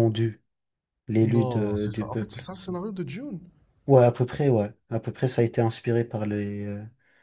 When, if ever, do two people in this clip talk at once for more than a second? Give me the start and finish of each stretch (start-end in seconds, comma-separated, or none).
1.2-2.5